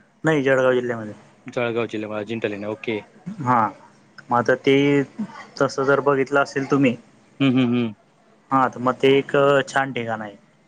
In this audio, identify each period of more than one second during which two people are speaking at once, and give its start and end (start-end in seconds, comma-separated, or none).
none